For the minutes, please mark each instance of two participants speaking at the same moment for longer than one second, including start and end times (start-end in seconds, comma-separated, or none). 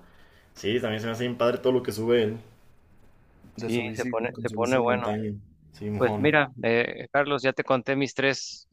3.6-5.2